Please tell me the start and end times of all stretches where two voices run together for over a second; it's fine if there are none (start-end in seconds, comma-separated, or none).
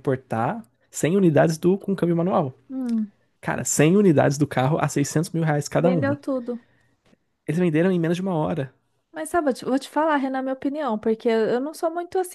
none